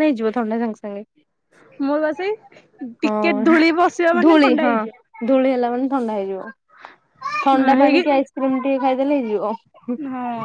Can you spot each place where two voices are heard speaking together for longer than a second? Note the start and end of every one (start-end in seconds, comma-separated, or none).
3.0-4.7